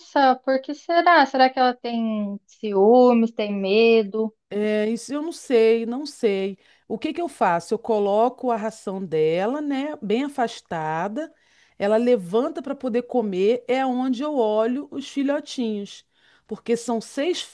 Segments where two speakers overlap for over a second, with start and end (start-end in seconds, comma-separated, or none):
none